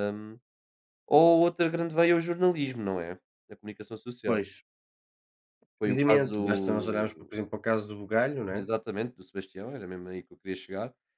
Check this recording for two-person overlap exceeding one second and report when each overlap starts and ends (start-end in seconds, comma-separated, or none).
5.8-7.4